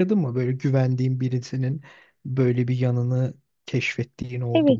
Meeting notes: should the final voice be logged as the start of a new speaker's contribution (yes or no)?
yes